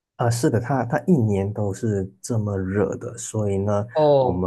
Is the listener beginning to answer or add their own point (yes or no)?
no